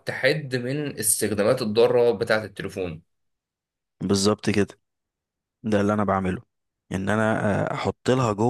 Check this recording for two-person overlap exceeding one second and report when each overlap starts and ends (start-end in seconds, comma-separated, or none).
none